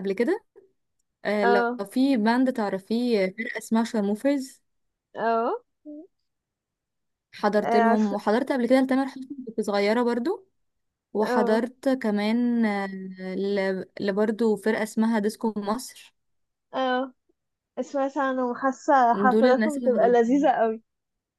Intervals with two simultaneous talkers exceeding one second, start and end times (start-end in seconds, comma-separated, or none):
19.3-20.5